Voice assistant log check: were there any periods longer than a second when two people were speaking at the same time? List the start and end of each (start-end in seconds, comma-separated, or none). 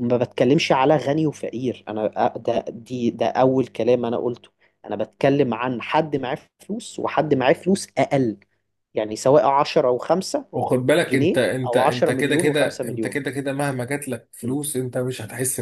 11.1-13.2